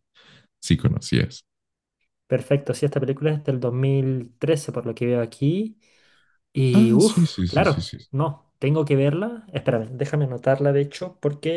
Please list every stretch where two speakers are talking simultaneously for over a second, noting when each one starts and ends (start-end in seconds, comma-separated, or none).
6.7-8.0